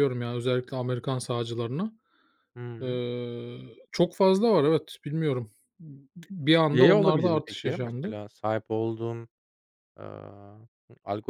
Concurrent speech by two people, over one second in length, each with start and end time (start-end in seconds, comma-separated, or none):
6.7-8.1